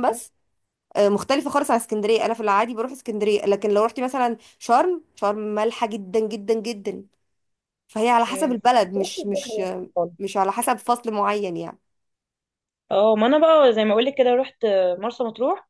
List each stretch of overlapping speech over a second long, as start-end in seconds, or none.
8.3-10.1